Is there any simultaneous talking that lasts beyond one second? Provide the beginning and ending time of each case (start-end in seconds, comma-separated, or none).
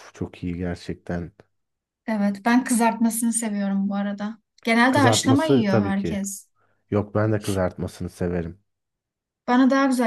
4.9-6.2